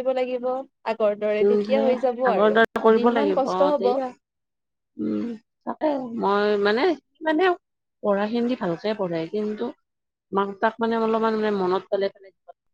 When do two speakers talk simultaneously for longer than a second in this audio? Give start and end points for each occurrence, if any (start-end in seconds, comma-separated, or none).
1.4-4.0